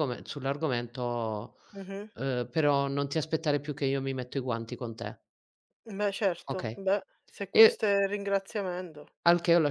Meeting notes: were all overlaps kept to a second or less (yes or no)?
yes